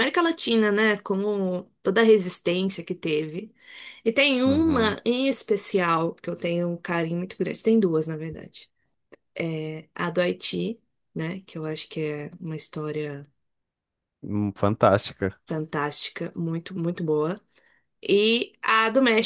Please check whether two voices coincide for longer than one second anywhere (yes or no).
no